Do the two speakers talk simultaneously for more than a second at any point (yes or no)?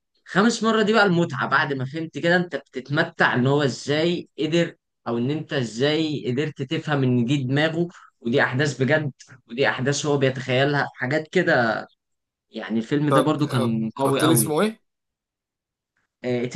yes